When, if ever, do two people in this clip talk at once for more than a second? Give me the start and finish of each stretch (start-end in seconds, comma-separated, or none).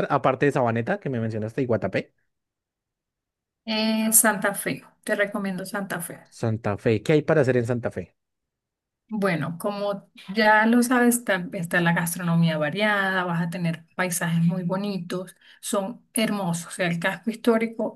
none